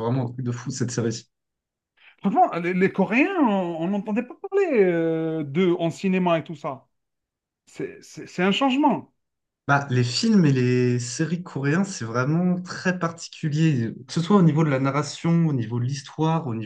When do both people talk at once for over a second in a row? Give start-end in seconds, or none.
none